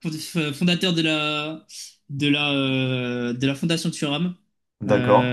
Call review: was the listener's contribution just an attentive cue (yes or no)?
yes